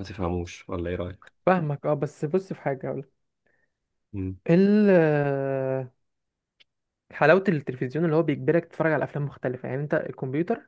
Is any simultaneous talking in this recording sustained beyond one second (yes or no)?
no